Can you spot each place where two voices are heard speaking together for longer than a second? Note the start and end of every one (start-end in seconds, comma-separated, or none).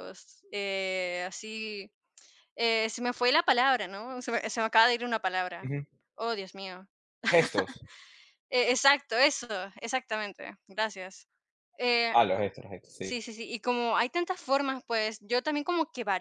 none